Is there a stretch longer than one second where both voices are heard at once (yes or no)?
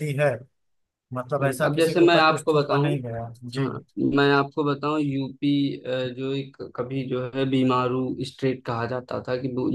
yes